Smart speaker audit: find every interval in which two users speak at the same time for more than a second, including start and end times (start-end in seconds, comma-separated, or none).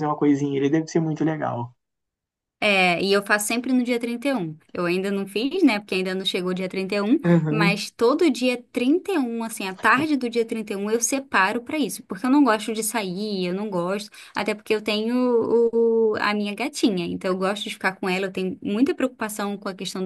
none